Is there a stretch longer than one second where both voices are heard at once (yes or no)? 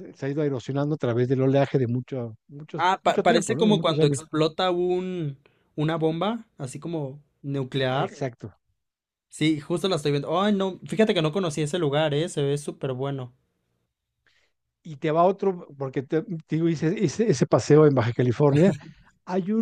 yes